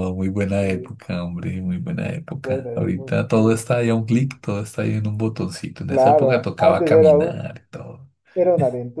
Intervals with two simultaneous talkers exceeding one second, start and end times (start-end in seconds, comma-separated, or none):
2.4-4.0, 5.9-7.4